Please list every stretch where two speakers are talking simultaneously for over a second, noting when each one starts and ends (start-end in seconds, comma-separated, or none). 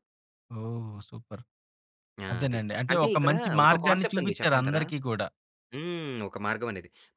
2.3-4.8